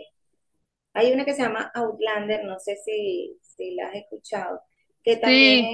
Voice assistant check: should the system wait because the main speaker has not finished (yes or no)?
yes